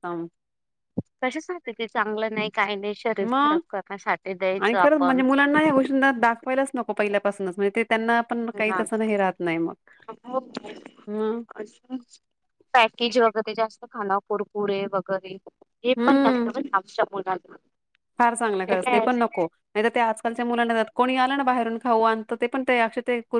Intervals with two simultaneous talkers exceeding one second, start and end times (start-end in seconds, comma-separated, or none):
none